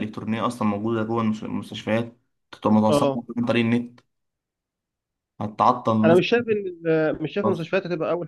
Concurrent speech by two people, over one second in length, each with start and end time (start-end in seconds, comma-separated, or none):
none